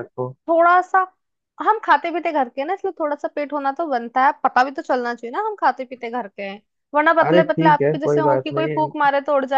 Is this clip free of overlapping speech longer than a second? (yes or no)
no